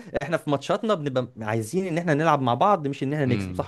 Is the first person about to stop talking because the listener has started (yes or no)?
yes